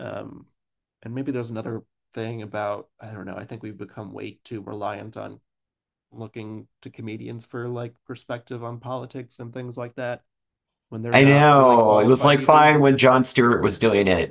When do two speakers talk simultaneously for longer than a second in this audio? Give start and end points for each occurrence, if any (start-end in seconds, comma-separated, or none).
11.1-12.7